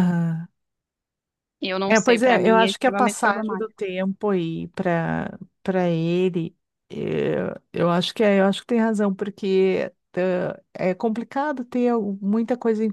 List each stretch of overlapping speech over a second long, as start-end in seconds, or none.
1.9-3.7